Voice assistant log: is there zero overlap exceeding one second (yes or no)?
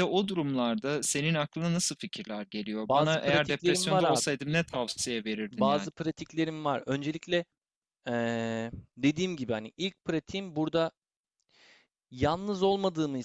no